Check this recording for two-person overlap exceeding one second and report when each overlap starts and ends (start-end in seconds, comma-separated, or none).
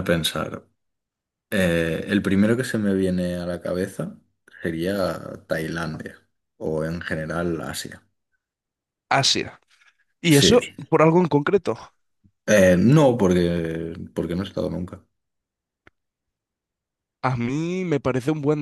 none